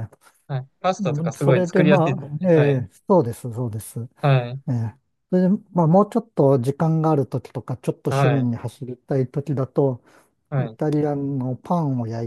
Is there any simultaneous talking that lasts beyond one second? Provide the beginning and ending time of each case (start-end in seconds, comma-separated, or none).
1.0-2.5